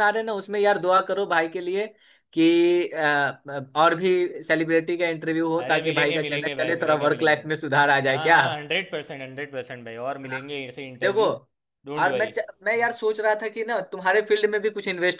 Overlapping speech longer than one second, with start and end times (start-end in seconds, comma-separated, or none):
5.6-7.5